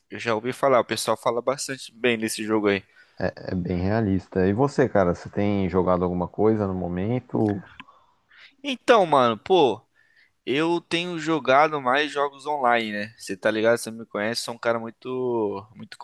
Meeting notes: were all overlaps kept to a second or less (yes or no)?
yes